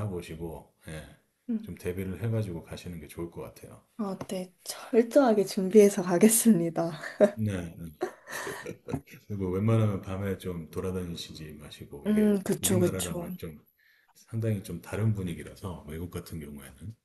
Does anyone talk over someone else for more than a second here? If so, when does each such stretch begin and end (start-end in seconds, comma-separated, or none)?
12.1-13.3